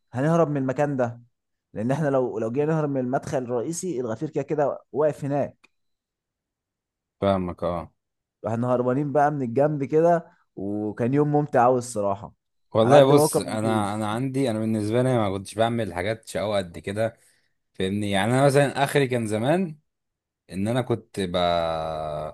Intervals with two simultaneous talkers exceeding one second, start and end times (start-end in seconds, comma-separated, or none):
12.8-14.1